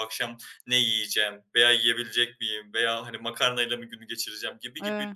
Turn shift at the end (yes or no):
no